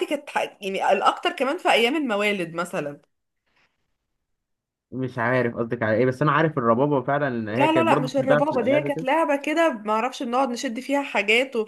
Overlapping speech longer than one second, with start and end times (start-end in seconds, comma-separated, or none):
7.5-9.1